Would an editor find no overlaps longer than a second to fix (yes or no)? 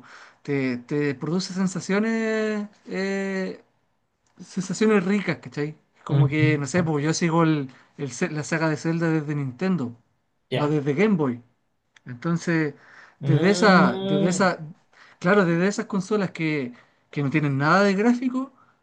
no